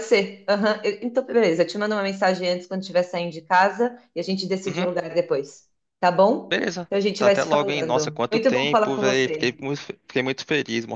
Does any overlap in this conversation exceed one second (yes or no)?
yes